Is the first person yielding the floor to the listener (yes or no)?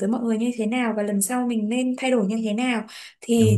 no